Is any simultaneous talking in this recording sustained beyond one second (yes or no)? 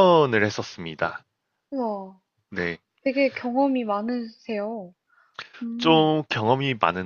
no